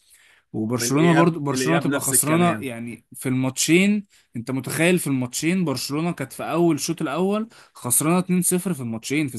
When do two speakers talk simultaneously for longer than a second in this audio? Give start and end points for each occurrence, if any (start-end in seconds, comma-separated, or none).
0.8-2.7